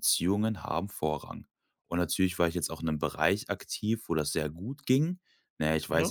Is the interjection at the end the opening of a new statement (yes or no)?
no